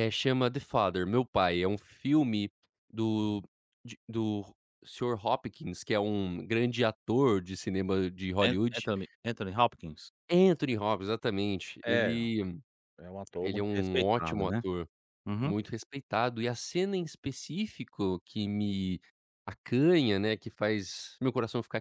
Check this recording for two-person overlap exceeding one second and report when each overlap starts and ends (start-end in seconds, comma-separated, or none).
13.4-14.6